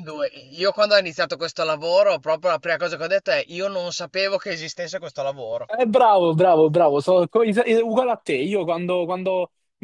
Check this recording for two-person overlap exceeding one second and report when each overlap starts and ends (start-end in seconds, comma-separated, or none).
none